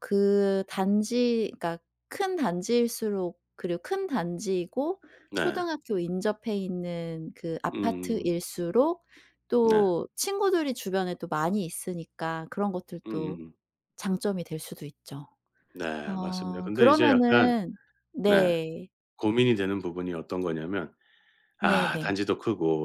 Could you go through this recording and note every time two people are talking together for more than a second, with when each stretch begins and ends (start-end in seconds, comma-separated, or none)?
16.1-17.5